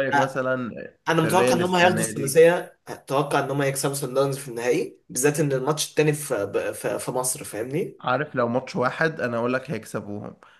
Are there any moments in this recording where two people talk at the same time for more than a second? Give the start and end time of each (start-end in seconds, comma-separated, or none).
1.1-2.4